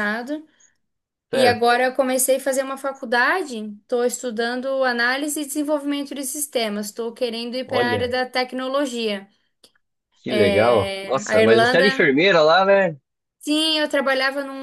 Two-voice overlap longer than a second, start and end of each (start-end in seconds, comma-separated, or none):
10.4-11.9